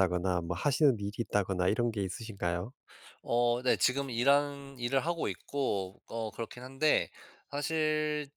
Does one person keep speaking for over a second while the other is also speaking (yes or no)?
no